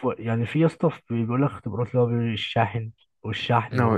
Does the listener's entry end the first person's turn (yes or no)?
yes